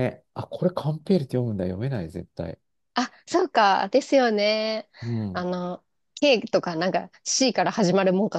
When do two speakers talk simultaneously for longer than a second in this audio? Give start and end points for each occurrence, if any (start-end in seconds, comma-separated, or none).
none